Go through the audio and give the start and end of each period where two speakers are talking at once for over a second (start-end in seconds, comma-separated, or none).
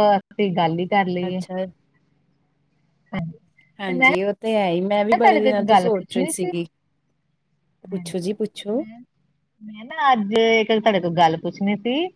5.0-6.5